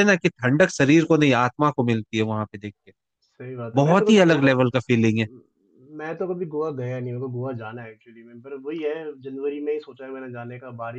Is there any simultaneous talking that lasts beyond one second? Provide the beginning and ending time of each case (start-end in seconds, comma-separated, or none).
3.7-5.3